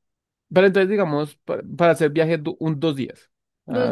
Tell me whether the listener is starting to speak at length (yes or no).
no